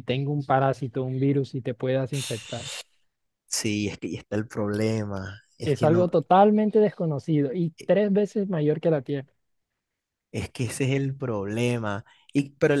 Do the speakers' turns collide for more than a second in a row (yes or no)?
no